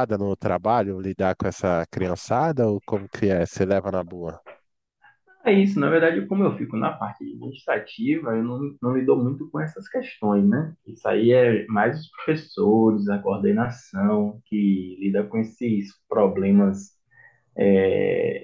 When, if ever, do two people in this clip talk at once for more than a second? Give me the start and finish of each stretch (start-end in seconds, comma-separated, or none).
none